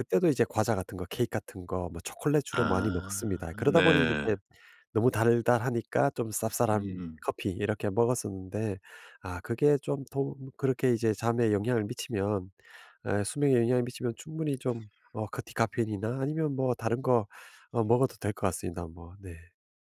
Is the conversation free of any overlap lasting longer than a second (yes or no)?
no